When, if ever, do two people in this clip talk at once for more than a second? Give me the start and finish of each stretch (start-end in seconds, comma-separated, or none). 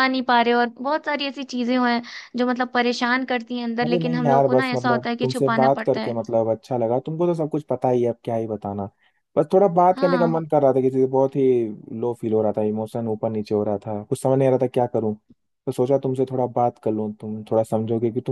3.8-6.2